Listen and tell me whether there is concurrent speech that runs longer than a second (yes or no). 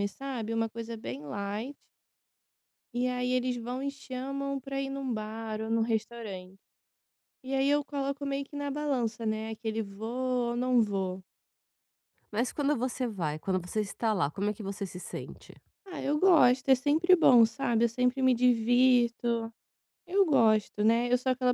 no